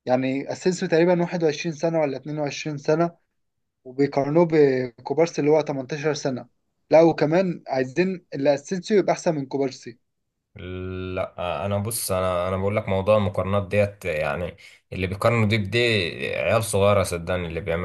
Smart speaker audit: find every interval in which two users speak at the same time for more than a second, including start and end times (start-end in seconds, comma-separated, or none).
none